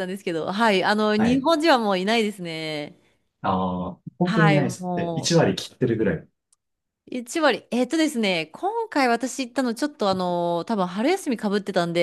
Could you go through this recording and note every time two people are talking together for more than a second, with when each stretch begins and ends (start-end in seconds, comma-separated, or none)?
4.2-5.5